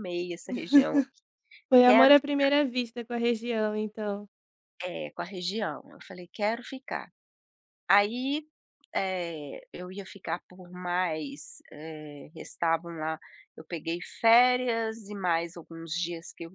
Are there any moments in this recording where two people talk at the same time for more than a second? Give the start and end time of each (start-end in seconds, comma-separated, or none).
none